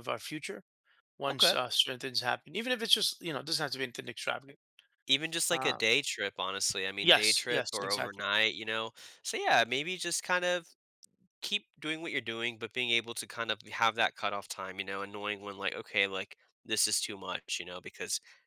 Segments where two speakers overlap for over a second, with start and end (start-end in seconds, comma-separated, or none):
7.0-8.2